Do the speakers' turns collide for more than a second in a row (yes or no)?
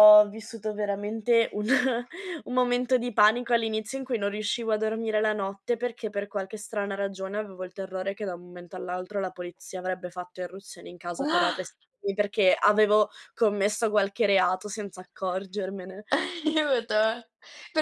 no